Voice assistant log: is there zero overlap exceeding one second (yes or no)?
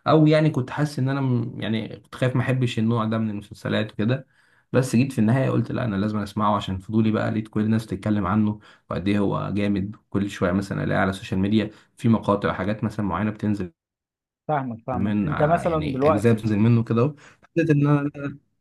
no